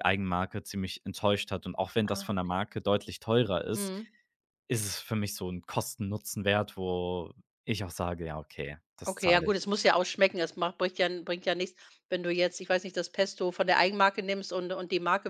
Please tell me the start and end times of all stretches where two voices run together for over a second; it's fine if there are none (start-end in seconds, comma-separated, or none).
none